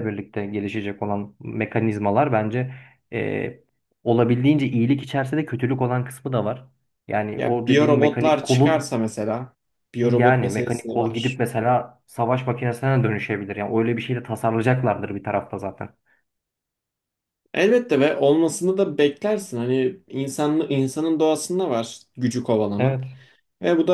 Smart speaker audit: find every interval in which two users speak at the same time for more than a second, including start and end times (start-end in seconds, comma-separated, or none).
7.4-9.0, 10.0-11.4